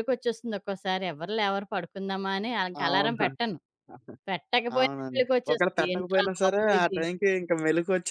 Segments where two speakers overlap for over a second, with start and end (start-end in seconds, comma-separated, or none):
4.8-7.0